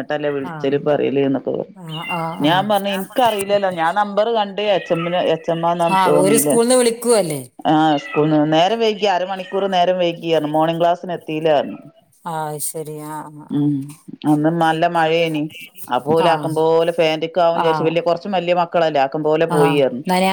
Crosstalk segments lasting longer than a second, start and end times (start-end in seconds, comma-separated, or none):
none